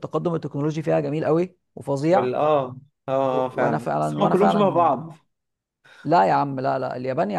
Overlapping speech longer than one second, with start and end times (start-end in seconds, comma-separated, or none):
3.5-4.9